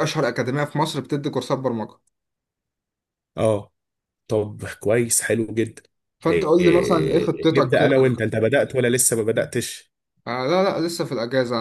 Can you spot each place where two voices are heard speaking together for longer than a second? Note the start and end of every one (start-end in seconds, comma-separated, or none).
6.3-7.9